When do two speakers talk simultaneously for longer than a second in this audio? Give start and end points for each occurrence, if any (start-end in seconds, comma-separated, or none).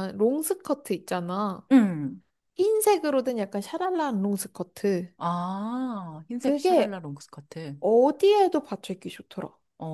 none